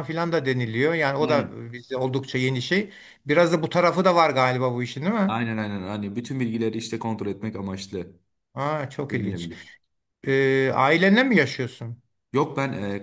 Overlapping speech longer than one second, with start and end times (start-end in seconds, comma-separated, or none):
none